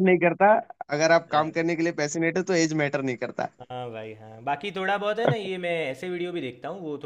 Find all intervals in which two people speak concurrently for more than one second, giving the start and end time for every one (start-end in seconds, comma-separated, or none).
none